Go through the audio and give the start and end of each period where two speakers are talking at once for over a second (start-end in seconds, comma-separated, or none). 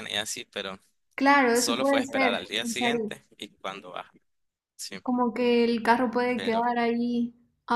1.5-3.1